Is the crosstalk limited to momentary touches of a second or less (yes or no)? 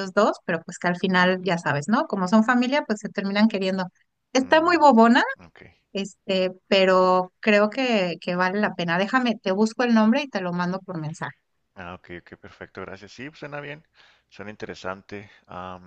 yes